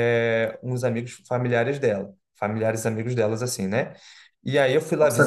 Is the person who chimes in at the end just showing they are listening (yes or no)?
no